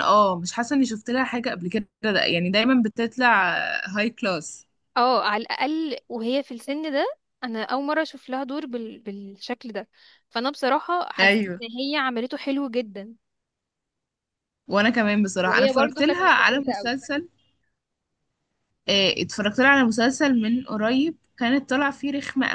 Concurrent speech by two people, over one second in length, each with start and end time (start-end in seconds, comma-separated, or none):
15.4-16.9